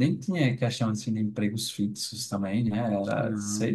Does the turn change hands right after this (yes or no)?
no